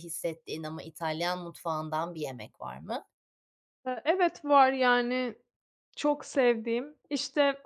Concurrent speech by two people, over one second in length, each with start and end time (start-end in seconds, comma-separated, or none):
none